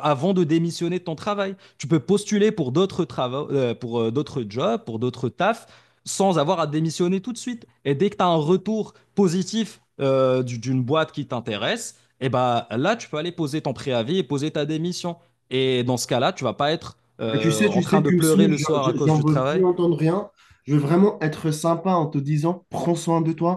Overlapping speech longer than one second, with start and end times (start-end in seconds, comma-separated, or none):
17.3-19.6